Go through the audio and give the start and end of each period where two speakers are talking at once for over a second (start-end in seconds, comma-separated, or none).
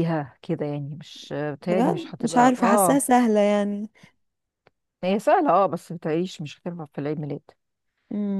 1.6-3.0